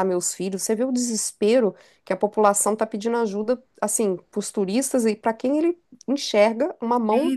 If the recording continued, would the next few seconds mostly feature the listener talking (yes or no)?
yes